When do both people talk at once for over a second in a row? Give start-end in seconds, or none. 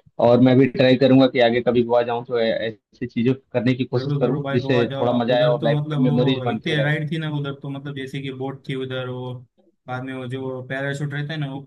4.0-6.9